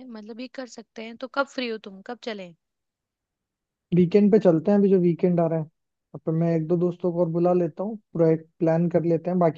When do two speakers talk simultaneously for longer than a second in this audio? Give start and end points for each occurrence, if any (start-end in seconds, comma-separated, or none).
none